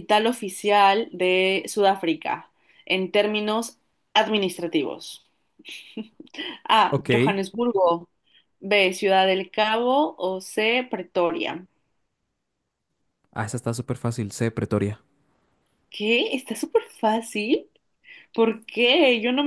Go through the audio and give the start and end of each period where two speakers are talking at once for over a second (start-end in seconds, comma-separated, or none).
none